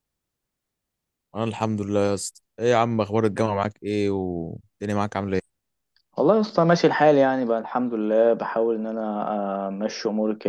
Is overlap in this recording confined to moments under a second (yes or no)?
yes